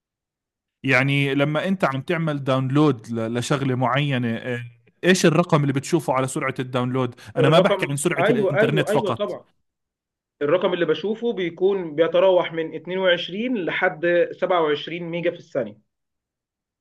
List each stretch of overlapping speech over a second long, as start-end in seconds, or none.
7.4-9.4